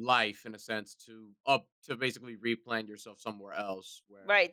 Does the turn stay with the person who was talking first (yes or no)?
no